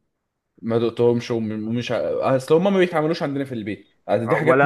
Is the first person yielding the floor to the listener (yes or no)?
yes